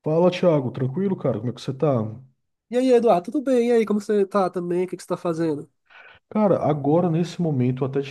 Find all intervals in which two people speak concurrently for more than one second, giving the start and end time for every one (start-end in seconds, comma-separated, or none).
none